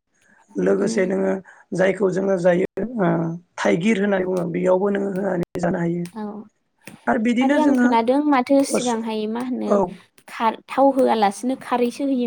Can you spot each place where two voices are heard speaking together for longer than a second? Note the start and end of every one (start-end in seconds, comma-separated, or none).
none